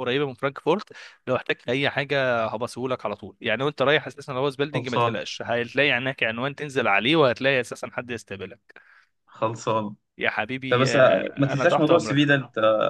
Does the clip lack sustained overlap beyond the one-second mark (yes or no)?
no